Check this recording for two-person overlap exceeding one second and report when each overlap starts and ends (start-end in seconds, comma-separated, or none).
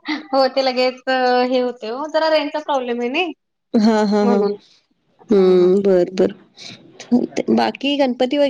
none